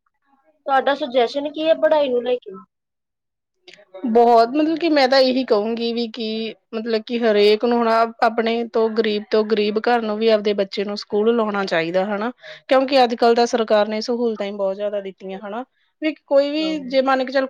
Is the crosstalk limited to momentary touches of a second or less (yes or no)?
yes